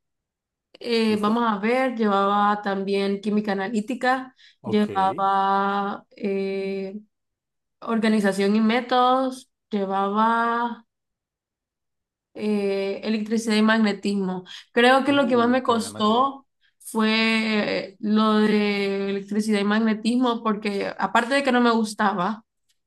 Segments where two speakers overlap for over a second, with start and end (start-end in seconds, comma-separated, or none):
15.1-16.3